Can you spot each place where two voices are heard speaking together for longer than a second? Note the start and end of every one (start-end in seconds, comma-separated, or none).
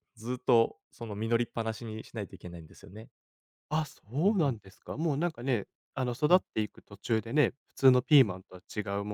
none